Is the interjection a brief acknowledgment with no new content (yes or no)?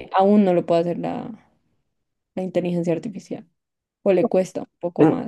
no